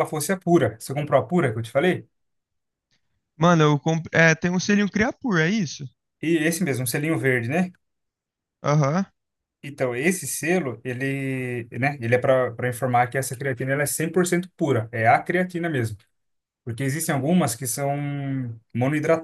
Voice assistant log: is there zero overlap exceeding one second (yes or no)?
yes